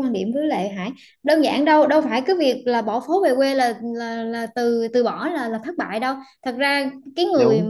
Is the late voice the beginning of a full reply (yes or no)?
no